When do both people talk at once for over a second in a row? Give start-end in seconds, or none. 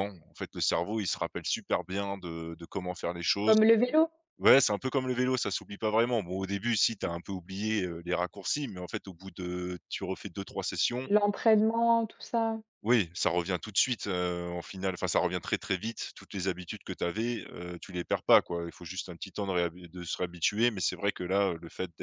none